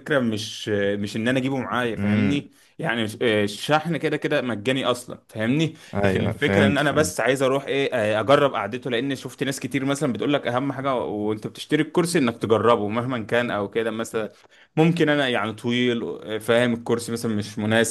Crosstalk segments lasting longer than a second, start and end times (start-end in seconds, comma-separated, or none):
5.9-7.2